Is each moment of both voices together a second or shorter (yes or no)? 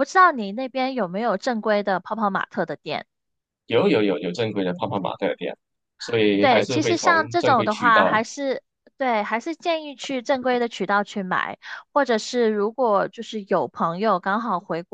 no